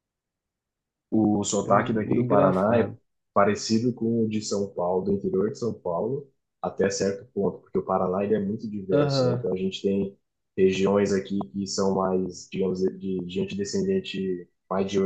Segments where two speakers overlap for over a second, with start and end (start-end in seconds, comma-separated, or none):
1.6-2.9